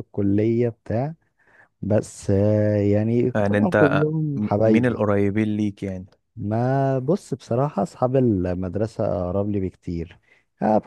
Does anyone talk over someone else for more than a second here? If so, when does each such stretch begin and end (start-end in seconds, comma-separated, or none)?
3.4-5.1